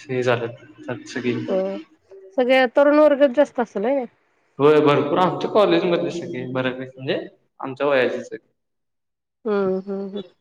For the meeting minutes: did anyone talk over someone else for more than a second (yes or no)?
no